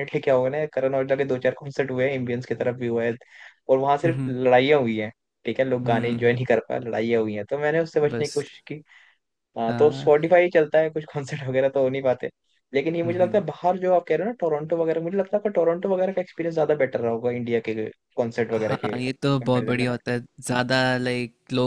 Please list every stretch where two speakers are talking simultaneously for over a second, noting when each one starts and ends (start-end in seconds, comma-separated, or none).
18.5-19.9